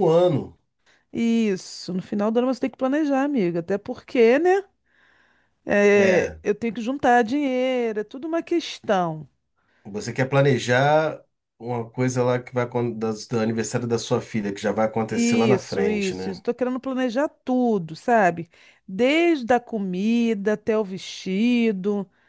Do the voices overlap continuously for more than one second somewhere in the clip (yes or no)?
yes